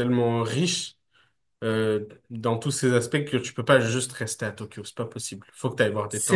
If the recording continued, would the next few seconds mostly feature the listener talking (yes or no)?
no